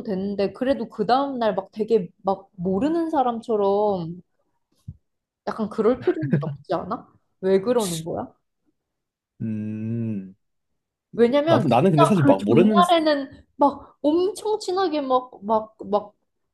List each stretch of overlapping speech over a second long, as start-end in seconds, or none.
11.4-12.8